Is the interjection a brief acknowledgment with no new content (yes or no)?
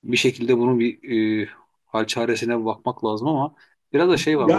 yes